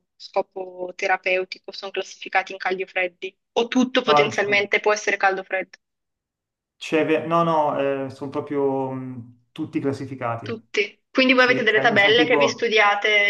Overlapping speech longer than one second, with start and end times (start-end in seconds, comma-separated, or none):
11.3-12.7